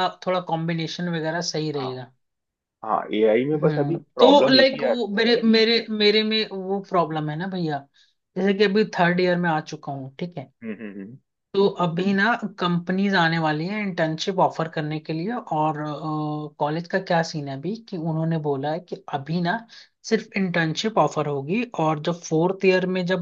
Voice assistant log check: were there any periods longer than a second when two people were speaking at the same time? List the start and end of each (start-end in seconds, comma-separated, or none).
3.5-5.0